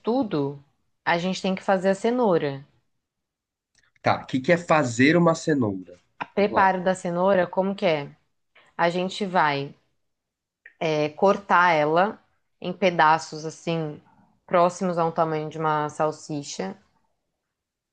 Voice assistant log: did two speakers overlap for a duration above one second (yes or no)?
no